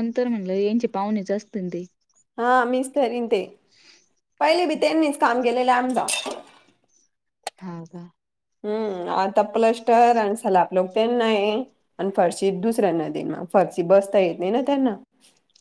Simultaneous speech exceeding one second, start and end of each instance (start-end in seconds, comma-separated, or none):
none